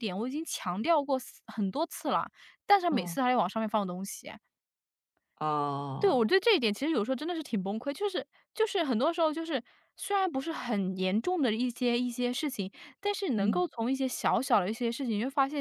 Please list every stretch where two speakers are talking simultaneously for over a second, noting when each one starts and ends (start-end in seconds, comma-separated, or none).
none